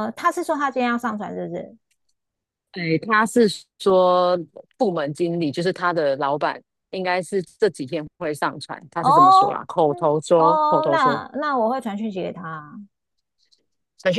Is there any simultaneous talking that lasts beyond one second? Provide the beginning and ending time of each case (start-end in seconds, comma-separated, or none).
9.0-11.2